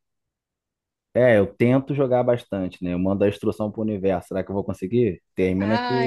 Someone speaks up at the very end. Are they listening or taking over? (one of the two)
taking over